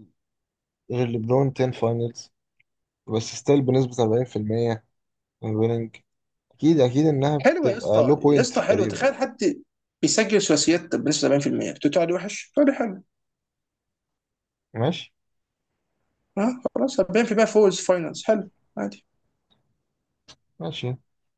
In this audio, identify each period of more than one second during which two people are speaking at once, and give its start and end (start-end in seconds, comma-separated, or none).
7.4-9.1